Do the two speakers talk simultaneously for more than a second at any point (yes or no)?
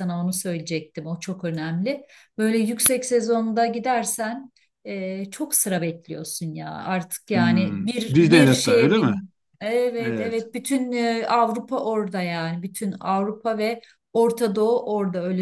yes